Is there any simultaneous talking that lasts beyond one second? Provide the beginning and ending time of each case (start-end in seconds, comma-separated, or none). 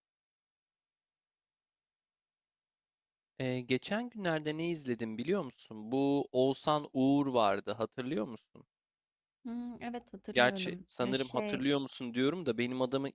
10.3-11.6